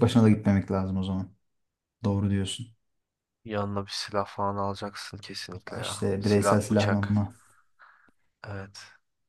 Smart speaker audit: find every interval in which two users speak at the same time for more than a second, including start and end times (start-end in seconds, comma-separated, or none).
5.8-7.2